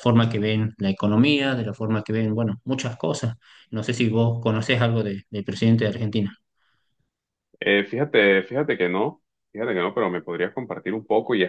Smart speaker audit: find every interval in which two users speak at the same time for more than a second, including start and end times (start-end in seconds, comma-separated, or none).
none